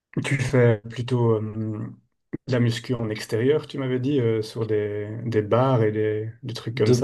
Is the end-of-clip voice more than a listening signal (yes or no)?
yes